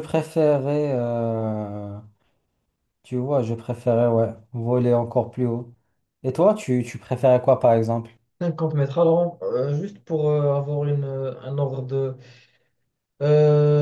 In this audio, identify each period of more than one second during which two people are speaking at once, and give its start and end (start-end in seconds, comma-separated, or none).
none